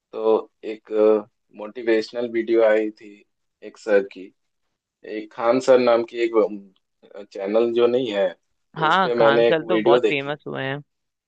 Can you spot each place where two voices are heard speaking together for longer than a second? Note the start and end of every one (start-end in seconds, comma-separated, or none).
8.8-10.4